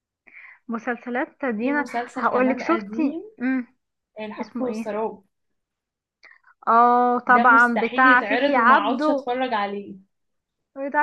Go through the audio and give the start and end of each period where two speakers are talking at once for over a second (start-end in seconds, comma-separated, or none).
1.6-3.2, 7.3-9.3